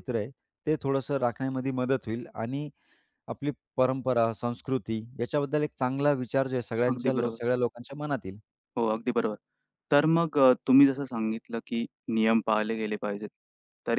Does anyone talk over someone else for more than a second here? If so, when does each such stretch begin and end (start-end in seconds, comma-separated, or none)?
none